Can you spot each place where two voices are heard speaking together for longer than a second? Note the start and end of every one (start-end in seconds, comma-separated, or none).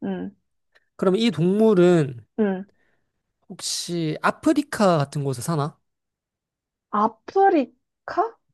none